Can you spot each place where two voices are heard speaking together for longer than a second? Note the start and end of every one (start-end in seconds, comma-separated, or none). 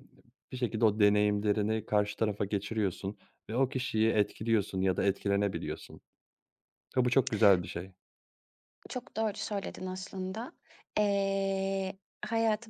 none